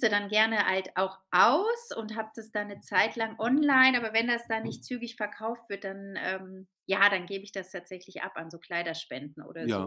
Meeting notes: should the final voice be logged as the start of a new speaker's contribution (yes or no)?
yes